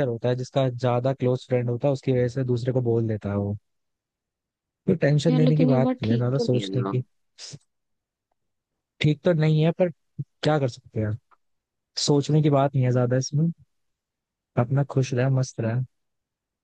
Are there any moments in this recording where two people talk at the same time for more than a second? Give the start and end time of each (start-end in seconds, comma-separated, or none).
5.3-7.0